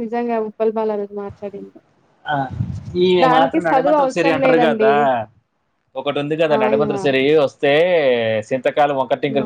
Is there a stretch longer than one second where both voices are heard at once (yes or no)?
yes